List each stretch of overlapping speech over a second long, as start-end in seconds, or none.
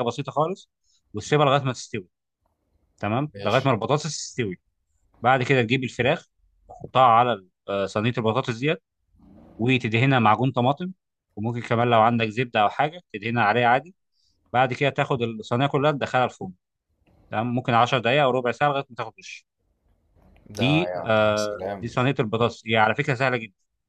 20.5-22.0